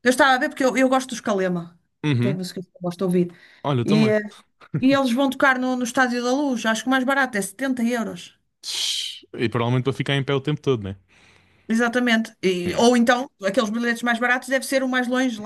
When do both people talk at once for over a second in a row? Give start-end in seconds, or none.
none